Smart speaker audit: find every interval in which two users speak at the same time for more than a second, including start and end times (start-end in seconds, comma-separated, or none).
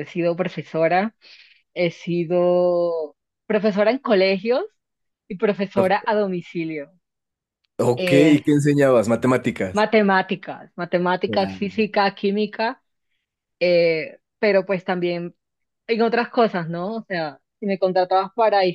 none